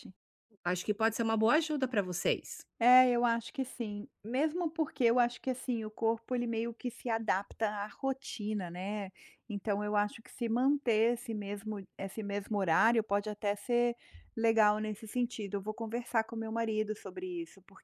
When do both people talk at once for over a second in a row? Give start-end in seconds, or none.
none